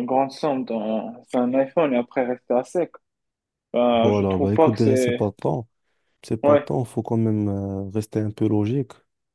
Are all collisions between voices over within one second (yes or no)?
no